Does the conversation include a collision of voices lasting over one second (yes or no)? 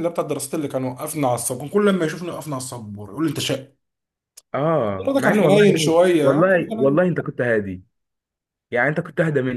yes